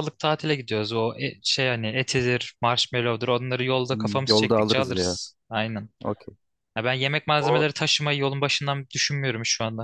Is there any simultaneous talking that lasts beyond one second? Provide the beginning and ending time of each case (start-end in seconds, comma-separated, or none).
3.9-5.2